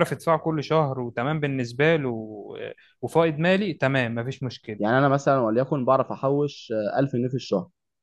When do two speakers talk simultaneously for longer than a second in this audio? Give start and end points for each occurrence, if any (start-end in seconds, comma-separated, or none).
none